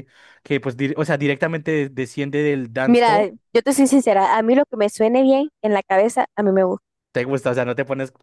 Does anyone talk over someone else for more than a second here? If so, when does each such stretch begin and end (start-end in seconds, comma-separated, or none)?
none